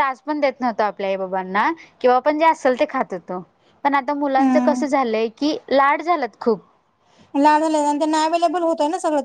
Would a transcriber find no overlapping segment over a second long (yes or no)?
yes